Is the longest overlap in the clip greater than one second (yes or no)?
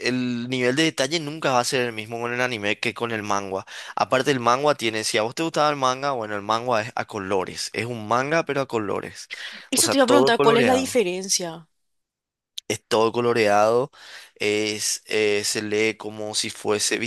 yes